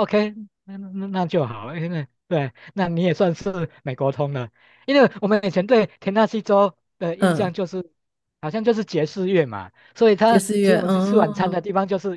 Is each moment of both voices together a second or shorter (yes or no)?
no